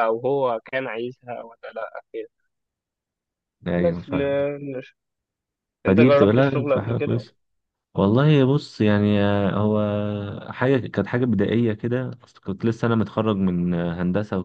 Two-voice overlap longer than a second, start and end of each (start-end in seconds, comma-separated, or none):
5.8-7.2